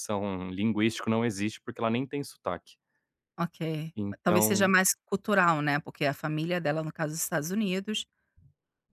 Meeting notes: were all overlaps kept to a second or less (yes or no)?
yes